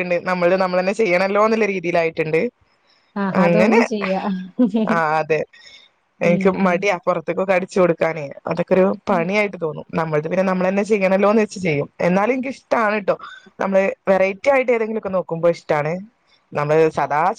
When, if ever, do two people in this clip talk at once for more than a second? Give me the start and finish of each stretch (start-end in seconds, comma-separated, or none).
none